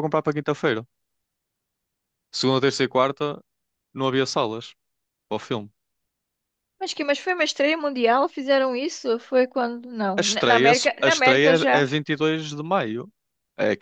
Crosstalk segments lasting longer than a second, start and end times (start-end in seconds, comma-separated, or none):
10.2-11.8